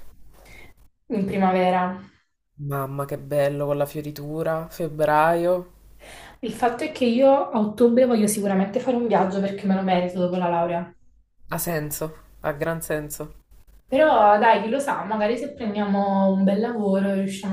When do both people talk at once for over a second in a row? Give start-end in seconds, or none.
none